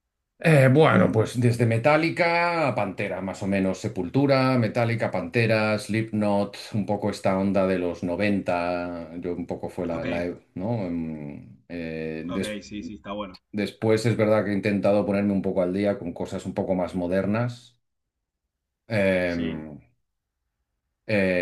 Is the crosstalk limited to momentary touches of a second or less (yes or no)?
yes